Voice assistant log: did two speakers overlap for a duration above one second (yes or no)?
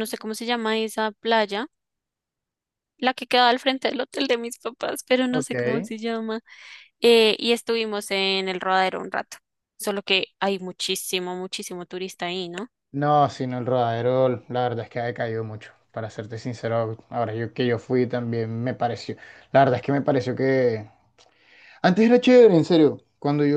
no